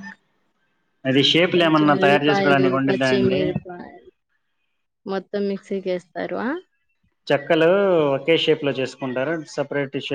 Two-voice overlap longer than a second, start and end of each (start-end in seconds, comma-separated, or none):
1.5-3.4